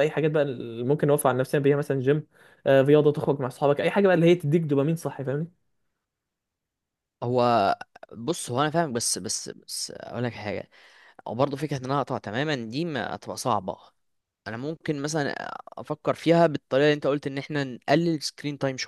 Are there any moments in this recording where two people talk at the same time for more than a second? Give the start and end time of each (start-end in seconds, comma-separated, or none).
none